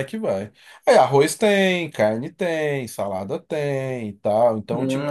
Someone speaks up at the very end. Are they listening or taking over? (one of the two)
taking over